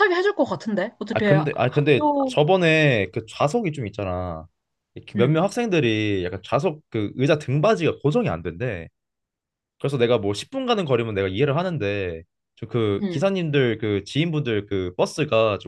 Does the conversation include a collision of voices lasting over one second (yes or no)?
yes